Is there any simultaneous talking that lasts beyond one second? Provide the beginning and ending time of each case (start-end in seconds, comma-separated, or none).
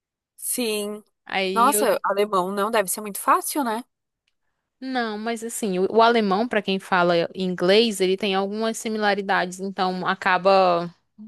none